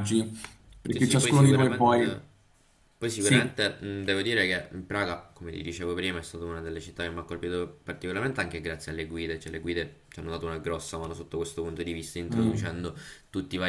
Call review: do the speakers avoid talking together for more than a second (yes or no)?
no